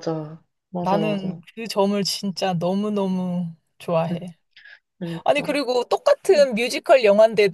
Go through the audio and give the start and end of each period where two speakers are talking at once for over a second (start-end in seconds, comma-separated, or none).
none